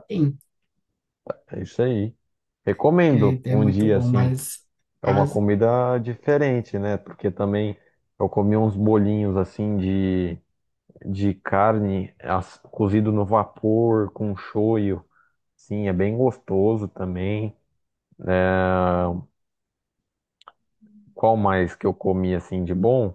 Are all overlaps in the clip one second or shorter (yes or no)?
no